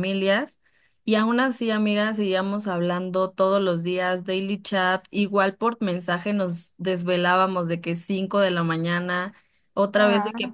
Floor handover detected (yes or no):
no